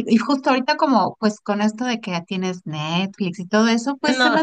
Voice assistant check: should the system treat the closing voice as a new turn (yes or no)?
no